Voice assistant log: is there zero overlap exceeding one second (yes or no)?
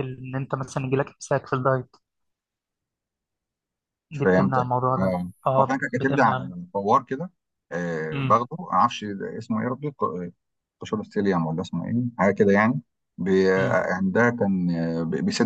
no